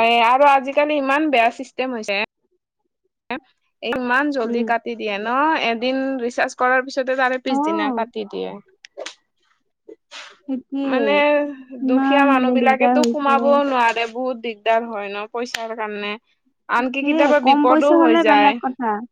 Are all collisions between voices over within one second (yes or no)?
no